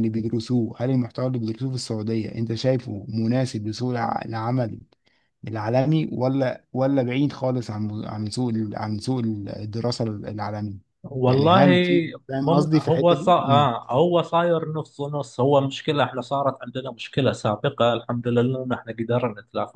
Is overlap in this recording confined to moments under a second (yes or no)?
no